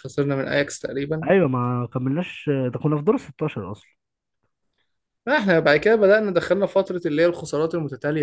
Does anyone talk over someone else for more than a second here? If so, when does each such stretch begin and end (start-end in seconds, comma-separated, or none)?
none